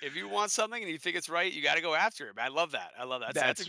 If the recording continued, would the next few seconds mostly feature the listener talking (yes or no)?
yes